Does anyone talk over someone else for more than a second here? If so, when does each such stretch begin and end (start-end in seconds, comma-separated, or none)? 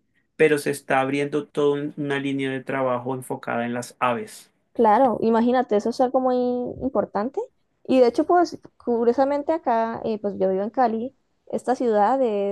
none